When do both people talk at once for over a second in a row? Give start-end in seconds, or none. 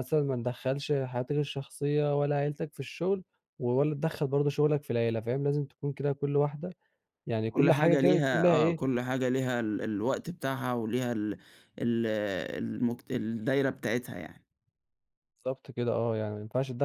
7.5-8.8